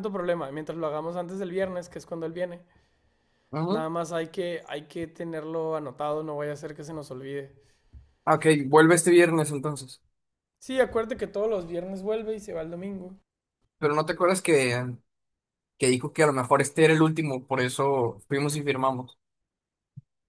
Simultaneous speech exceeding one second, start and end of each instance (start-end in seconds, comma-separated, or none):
none